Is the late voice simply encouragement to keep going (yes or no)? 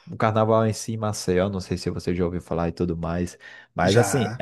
yes